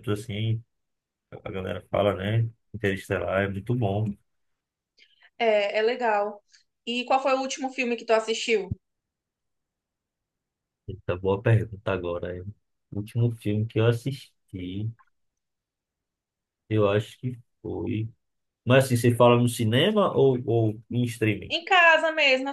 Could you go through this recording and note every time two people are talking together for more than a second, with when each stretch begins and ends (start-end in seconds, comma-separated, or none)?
none